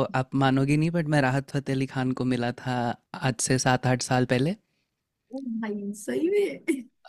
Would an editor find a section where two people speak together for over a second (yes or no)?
no